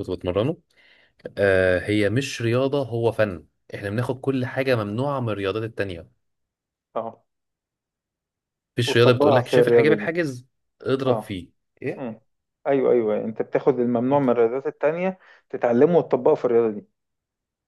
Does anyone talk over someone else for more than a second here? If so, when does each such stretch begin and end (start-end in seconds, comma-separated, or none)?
8.8-10.2